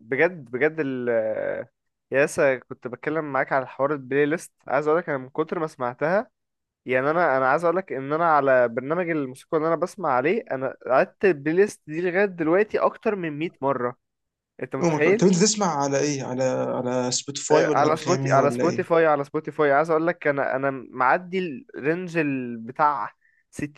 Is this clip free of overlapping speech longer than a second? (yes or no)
no